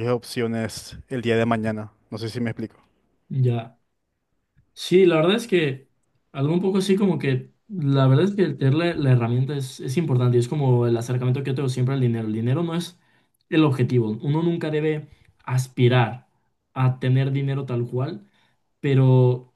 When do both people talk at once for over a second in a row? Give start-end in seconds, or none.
none